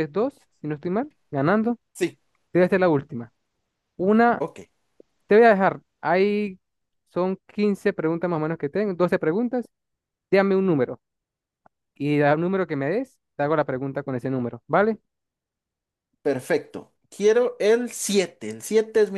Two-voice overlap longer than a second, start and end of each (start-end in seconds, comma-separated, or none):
none